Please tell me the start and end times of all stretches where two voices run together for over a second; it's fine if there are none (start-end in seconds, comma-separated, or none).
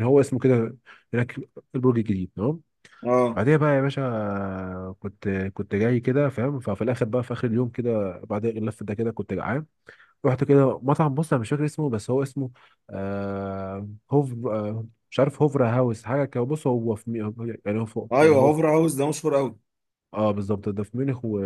none